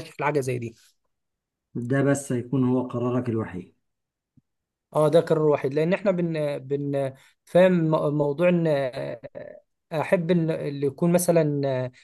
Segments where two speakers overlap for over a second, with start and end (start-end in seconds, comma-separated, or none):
none